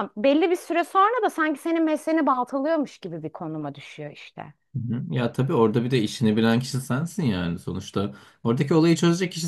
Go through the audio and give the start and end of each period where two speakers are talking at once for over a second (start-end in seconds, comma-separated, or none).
none